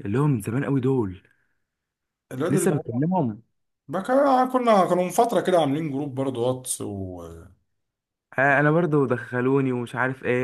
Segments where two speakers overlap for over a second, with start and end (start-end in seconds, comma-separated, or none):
none